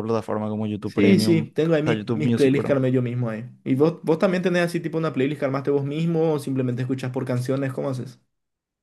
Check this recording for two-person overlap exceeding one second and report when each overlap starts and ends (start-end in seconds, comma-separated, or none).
0.8-2.8